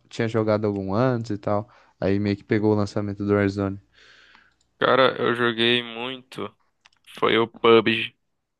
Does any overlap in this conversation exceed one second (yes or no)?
no